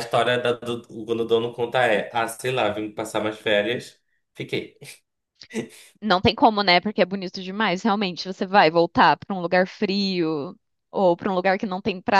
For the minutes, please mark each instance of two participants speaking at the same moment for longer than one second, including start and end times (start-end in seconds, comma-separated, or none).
none